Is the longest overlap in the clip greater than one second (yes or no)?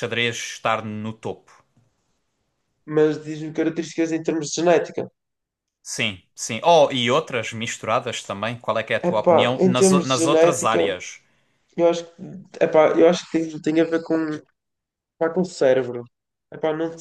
yes